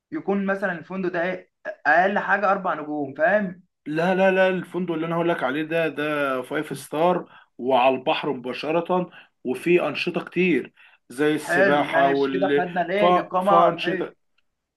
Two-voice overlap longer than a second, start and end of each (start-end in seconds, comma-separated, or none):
11.4-14.1